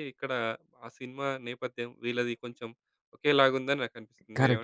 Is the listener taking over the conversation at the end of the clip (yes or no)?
yes